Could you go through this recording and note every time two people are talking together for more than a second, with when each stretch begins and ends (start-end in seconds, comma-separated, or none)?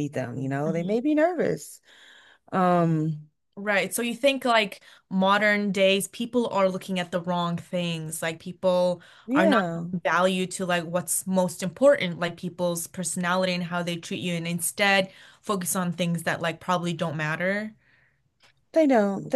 none